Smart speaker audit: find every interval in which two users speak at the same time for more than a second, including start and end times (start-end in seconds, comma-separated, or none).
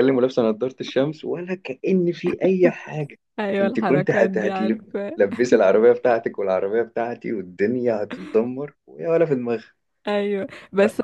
3.6-5.2